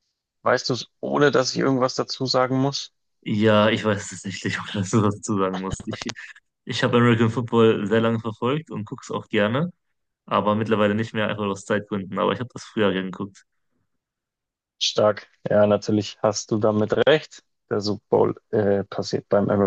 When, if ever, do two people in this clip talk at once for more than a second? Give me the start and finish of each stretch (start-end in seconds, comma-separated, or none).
none